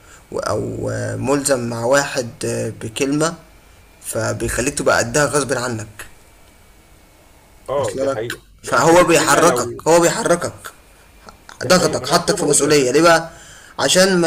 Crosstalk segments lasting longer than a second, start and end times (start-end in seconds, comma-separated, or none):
7.8-9.8, 11.6-12.9